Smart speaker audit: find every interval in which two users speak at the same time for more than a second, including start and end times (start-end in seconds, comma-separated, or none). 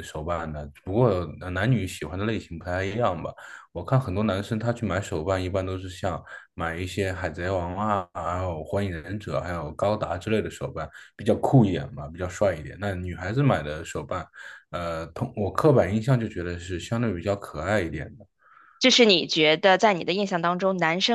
none